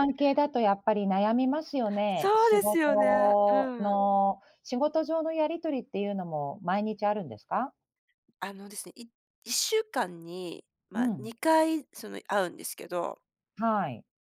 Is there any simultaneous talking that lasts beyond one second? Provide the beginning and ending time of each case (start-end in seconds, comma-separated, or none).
2.1-4.0